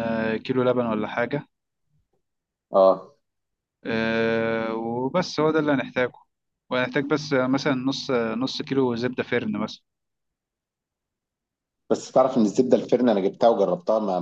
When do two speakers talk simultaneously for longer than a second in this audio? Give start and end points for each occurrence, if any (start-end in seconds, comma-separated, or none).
none